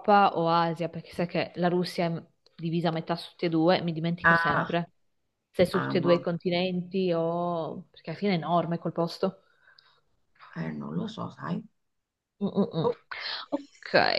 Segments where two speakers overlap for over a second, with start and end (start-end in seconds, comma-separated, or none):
none